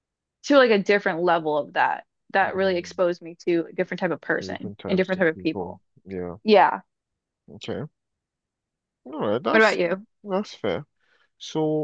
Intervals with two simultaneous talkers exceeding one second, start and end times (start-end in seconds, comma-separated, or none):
4.4-5.8